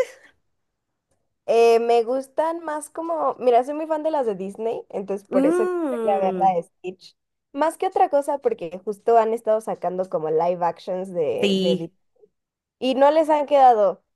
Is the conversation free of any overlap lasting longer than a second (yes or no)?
no